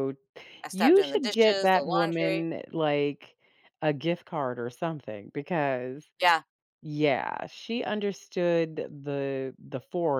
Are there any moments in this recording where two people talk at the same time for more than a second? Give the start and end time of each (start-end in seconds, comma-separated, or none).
0.7-2.4